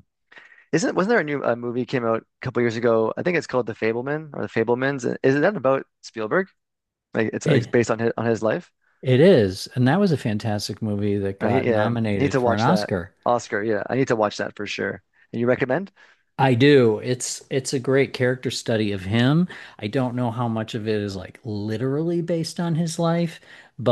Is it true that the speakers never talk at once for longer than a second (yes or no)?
no